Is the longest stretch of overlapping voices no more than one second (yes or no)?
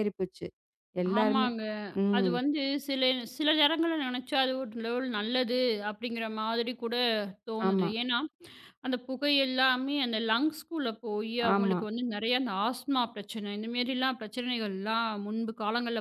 yes